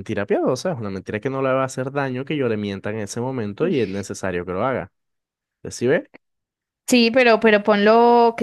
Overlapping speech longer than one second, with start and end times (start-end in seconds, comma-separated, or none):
none